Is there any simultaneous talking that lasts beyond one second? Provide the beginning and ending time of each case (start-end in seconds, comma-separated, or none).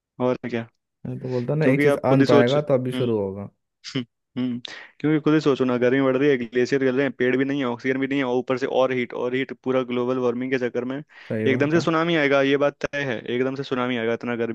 1.6-3.0